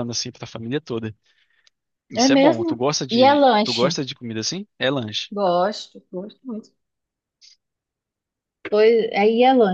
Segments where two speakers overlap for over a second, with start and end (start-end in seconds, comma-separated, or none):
2.2-4.0